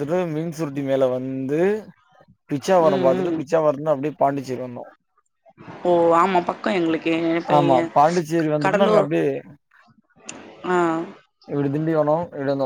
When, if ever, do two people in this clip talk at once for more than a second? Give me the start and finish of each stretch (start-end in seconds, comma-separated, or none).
none